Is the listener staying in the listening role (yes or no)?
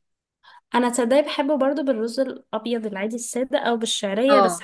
yes